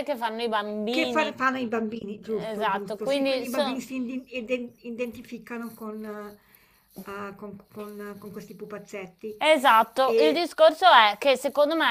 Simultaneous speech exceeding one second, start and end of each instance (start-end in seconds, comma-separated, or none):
2.2-3.8